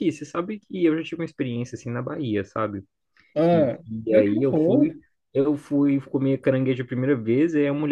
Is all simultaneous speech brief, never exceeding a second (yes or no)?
no